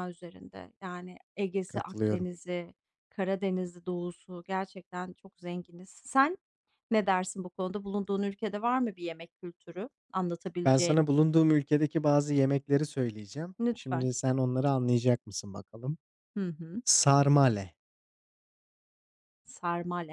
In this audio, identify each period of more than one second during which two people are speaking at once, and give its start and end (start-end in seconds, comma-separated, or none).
none